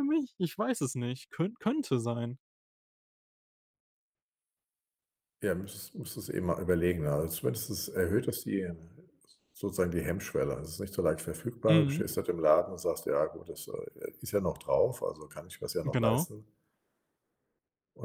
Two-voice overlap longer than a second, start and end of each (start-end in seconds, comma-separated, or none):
none